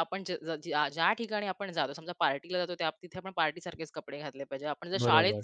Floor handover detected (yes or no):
no